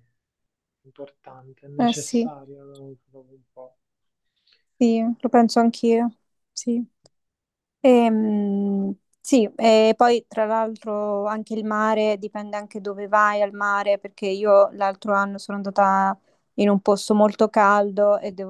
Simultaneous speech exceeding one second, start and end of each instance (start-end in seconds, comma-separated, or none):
none